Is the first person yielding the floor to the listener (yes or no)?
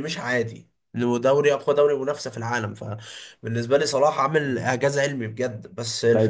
yes